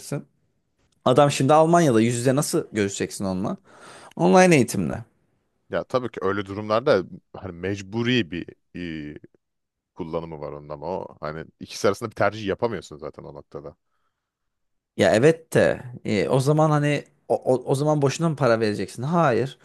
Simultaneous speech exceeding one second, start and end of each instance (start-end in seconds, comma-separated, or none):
none